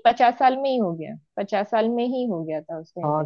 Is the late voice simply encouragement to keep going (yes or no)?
no